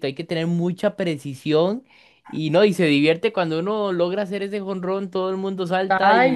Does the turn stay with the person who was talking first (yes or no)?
no